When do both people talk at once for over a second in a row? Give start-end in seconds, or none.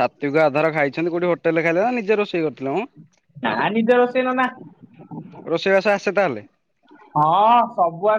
none